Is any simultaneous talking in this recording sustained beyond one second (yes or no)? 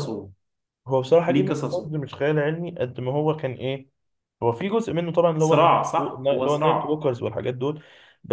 yes